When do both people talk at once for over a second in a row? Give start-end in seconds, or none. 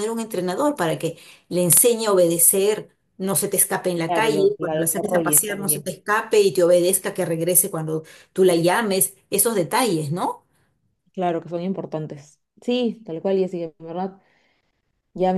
4.0-5.9